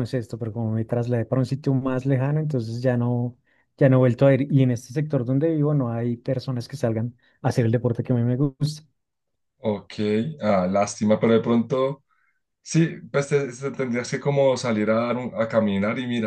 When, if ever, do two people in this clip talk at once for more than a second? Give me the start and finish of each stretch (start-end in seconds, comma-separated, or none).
none